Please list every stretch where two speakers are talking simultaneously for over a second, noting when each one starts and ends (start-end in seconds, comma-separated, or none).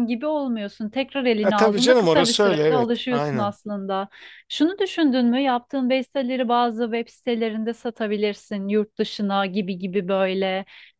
1.4-3.5